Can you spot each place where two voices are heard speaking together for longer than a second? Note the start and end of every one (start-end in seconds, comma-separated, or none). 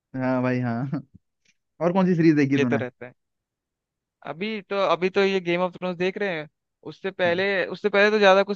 none